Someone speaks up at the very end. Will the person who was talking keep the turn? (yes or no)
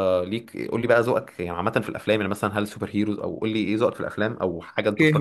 no